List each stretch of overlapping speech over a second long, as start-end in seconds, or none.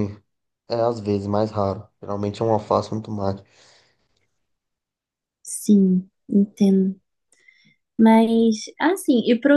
none